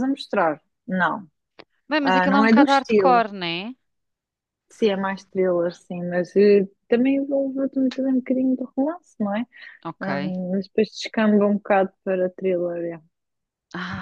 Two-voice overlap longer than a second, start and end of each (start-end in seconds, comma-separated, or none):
2.0-3.2